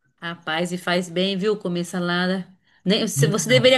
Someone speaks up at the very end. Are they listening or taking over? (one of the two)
listening